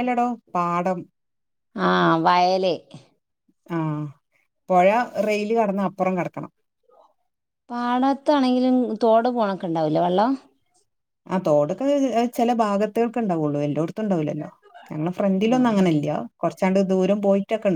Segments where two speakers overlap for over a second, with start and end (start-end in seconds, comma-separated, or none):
none